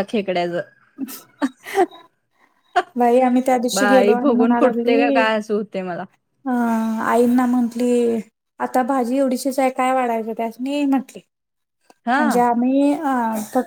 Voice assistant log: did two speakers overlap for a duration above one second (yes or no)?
yes